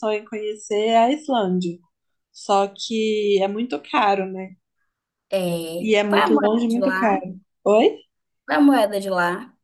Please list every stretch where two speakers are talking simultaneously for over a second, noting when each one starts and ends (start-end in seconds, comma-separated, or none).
5.8-7.2